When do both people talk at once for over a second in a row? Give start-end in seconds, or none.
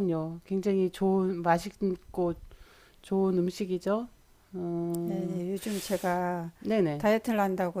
none